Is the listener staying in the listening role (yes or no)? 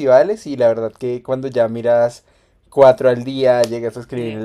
yes